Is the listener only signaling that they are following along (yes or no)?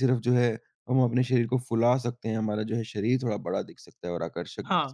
yes